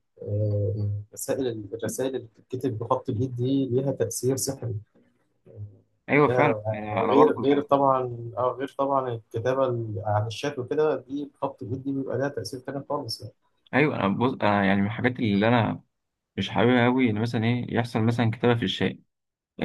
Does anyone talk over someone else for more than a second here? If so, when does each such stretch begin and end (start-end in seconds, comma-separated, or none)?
6.2-7.9